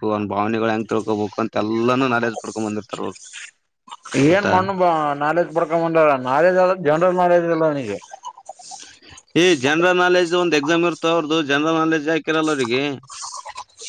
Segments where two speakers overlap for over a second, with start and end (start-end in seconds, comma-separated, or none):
none